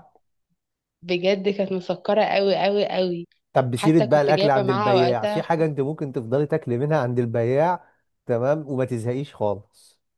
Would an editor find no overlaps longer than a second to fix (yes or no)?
no